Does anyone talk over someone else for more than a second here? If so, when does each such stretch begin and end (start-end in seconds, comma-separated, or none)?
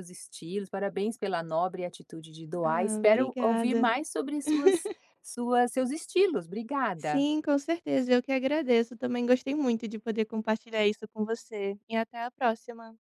2.7-3.9